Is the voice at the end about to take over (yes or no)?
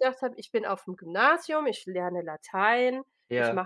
no